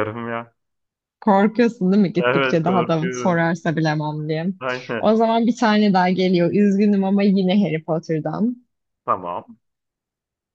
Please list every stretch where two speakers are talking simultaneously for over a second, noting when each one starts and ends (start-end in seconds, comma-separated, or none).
2.2-3.5